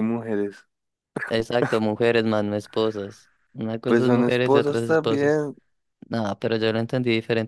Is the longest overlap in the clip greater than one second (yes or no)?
yes